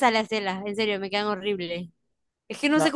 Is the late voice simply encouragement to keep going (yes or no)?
yes